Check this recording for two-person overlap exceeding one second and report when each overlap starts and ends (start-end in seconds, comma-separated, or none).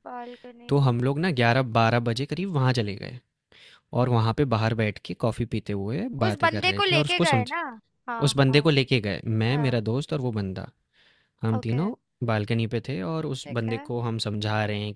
6.3-7.5